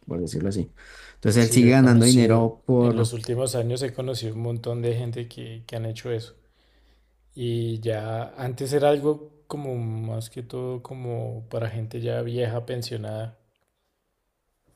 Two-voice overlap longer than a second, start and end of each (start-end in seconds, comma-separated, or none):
1.4-3.1